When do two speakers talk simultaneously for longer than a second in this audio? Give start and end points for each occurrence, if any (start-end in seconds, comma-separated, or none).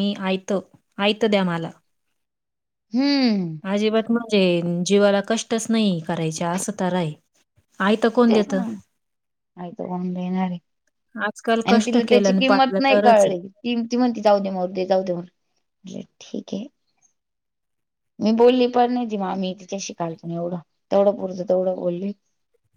11.7-13.4